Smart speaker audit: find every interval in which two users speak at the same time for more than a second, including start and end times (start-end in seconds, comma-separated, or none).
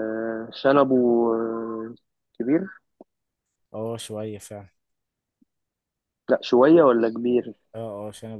none